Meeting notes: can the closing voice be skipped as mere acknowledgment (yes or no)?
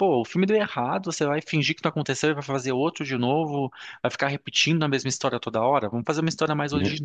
yes